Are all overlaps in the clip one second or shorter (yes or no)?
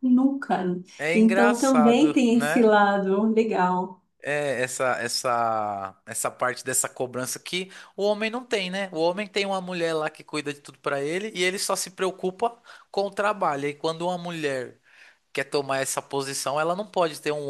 no